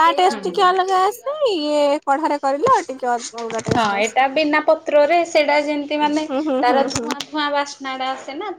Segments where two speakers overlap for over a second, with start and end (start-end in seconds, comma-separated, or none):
none